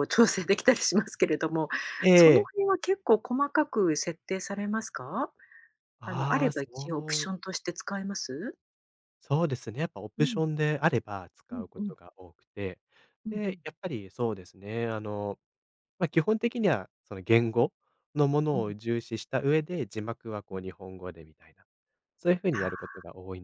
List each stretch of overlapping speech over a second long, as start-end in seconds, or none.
6.0-7.3